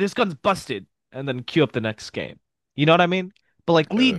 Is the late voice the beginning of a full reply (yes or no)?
no